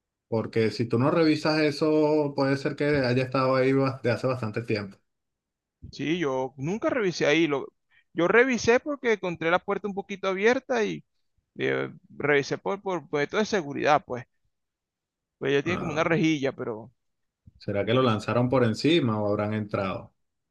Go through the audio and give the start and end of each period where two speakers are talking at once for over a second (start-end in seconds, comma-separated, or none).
none